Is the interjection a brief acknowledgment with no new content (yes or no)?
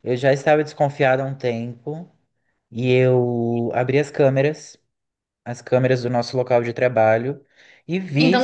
no